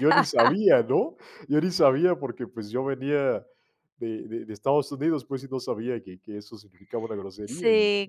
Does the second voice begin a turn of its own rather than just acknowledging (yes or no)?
yes